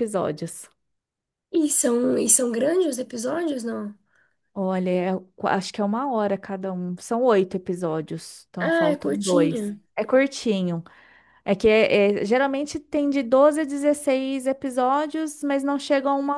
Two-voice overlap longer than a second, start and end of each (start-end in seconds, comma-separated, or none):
8.6-9.8